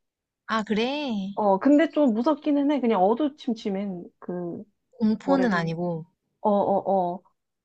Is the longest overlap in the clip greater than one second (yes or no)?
no